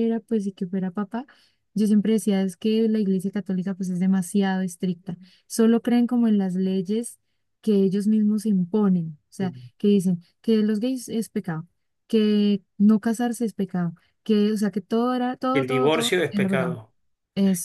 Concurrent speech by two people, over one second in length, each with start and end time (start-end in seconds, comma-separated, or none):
15.5-16.8